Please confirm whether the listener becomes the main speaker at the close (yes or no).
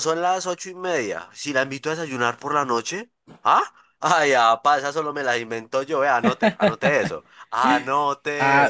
yes